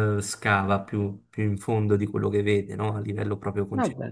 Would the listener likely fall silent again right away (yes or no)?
no